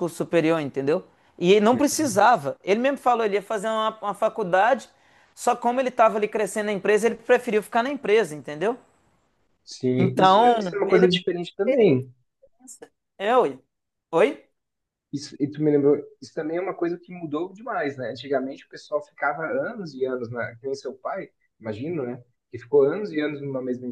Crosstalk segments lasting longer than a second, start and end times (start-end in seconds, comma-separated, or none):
10.0-11.2